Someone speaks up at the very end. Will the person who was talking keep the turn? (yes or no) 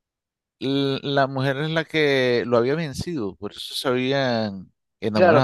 no